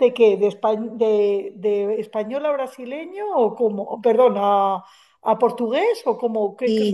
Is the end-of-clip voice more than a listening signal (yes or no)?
yes